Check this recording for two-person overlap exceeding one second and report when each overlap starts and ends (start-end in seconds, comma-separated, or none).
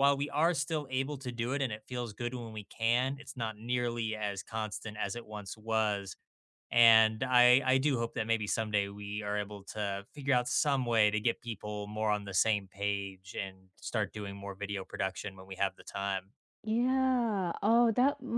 none